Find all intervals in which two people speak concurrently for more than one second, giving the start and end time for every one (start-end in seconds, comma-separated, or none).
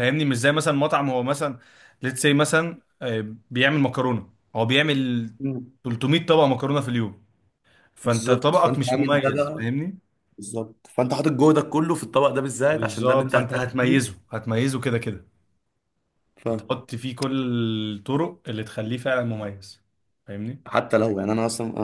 8.0-9.7, 12.7-14.0